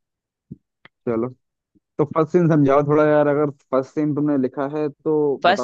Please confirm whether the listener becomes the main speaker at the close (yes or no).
yes